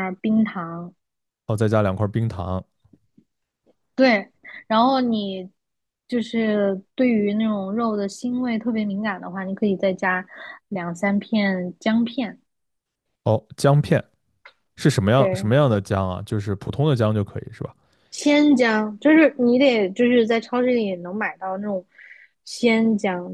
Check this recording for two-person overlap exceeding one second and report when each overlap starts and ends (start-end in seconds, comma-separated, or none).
none